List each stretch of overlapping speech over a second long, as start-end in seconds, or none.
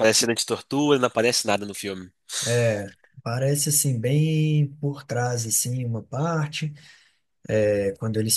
none